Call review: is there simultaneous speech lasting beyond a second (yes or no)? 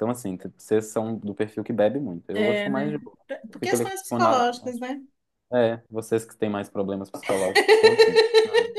yes